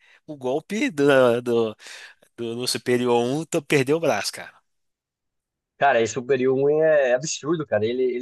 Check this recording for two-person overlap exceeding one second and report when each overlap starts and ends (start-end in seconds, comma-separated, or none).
none